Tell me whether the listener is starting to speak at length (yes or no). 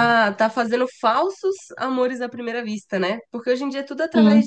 no